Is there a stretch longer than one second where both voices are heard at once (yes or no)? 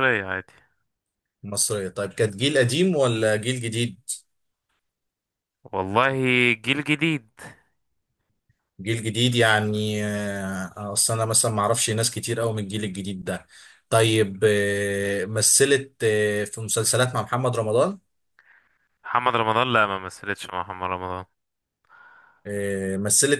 no